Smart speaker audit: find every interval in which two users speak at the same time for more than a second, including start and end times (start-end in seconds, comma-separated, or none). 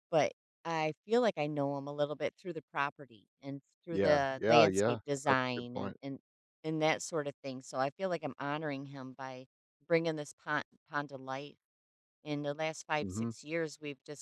3.9-6.0